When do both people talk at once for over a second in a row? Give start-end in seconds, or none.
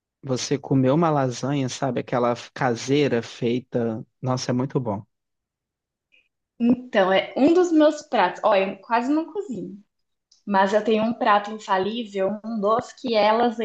none